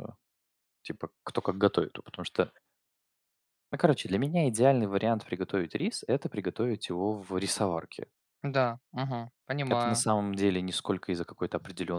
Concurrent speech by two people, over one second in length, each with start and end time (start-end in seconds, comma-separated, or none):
none